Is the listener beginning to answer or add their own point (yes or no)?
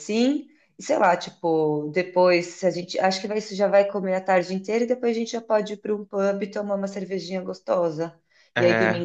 no